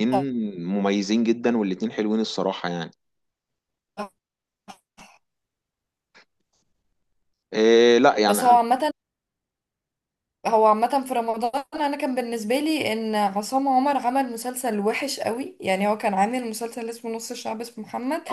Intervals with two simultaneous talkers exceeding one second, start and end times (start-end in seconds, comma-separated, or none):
none